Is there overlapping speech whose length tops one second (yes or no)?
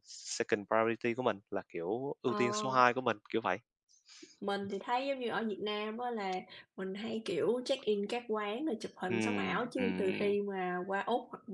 yes